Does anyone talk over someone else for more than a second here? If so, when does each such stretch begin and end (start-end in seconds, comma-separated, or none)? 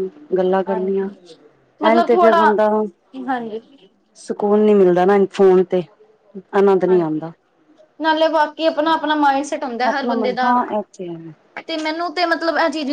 none